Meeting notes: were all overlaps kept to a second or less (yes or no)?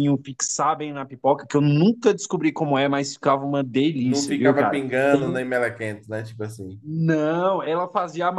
no